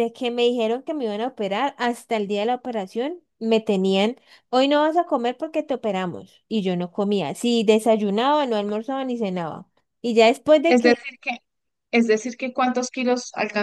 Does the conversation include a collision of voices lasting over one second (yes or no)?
no